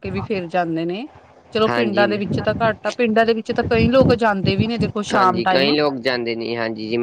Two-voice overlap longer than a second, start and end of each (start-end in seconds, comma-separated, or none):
none